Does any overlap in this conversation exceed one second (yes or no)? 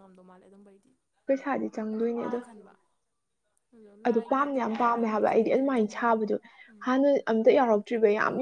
yes